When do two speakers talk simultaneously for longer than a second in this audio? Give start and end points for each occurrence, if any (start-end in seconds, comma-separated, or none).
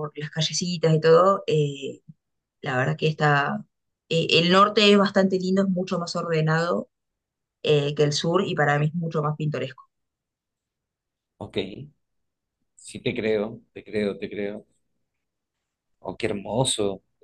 none